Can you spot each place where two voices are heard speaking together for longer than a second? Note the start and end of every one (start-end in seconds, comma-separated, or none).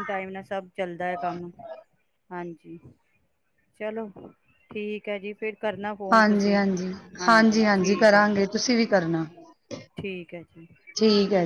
none